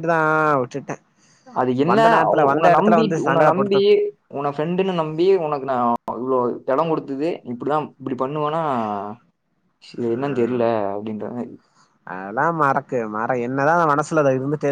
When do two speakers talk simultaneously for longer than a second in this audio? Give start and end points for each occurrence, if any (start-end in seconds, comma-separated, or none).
1.9-3.8